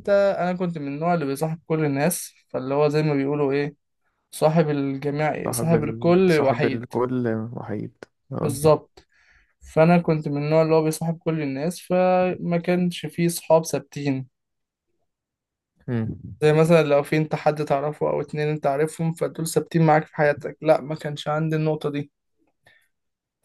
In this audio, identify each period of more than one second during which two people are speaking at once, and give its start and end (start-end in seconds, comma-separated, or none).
5.4-6.8